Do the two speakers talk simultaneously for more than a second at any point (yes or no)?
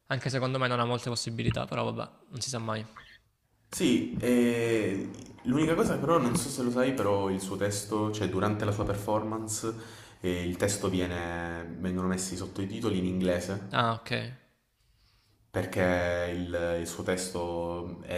no